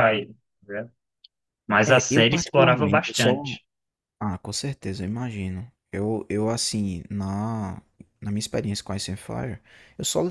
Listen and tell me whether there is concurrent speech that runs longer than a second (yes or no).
yes